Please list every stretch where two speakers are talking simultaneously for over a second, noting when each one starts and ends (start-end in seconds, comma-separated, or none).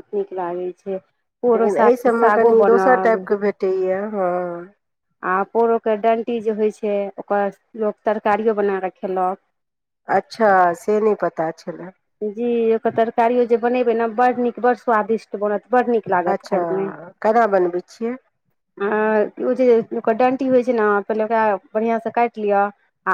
1.6-3.1